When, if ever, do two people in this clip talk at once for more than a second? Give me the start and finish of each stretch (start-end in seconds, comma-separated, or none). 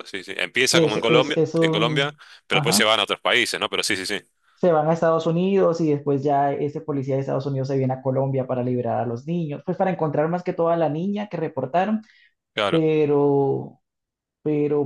0.7-2.9